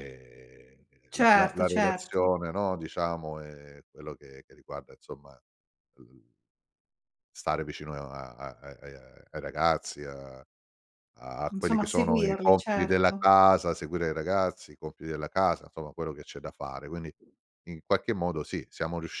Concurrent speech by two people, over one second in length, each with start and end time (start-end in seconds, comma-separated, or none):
1.1-2.3, 11.5-13.3